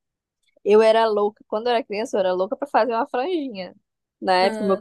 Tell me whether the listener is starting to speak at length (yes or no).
no